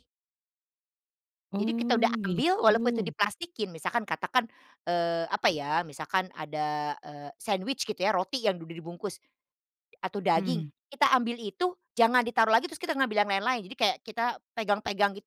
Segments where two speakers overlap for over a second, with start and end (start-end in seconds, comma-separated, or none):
1.6-3.1